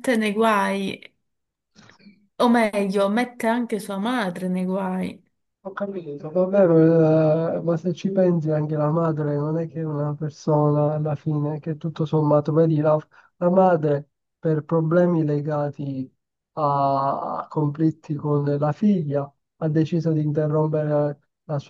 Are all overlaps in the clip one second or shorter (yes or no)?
yes